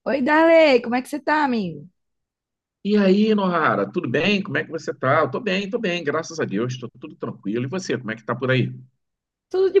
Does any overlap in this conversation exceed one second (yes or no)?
no